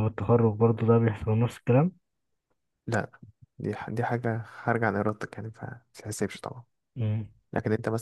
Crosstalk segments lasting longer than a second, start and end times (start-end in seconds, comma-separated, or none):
none